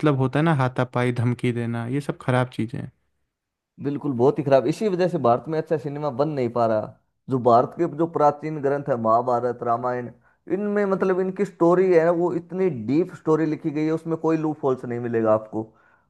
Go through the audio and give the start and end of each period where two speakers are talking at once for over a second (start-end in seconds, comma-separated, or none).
none